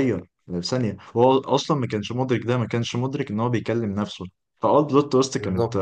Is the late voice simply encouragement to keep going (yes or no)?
yes